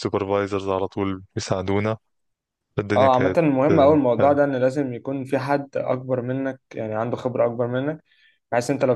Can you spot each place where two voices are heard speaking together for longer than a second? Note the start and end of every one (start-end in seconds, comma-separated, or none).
3.0-4.5